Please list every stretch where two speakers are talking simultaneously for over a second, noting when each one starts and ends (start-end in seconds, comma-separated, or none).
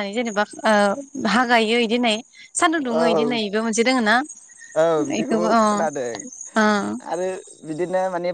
none